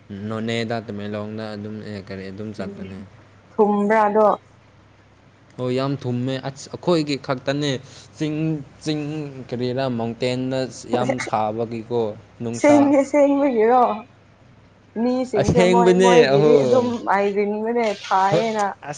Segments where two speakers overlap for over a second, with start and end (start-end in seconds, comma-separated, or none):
15.4-16.9